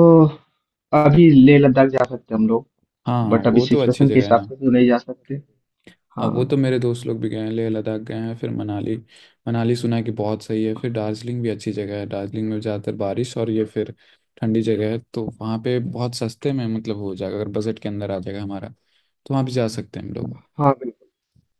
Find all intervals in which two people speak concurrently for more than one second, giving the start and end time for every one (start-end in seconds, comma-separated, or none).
3.3-4.5